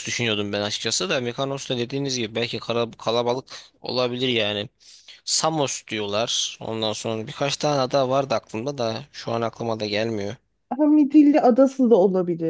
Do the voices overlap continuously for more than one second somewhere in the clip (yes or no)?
no